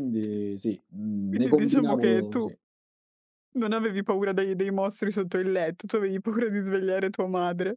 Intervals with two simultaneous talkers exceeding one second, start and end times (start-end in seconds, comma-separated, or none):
1.3-2.5